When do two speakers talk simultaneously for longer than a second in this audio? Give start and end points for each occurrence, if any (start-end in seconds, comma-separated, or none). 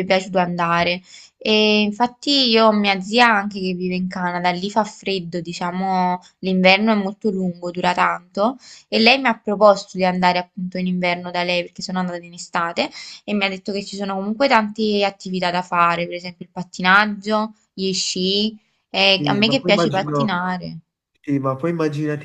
19.2-20.4